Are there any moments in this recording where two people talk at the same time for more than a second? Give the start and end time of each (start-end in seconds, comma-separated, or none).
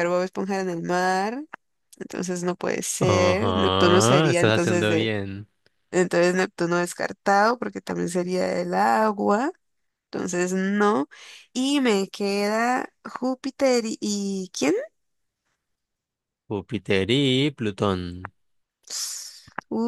3.0-5.1